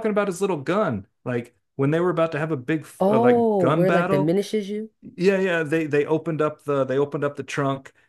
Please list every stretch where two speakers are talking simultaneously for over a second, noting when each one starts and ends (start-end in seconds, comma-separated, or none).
3.0-4.3